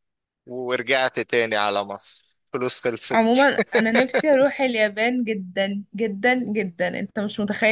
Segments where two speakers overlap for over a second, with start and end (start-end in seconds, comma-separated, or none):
none